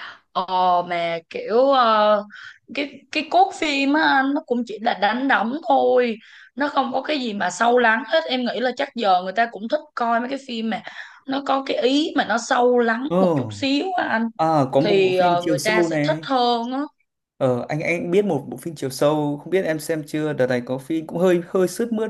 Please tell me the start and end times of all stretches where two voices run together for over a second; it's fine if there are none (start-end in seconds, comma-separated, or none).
14.8-16.2